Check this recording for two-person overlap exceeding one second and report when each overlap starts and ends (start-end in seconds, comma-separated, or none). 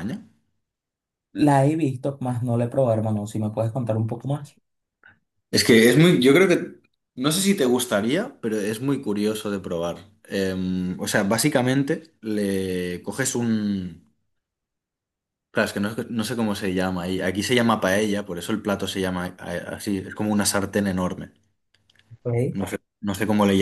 none